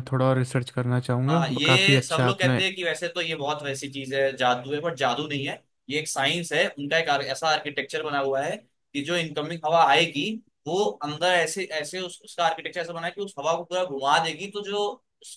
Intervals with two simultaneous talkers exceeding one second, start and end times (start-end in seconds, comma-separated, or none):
1.3-2.6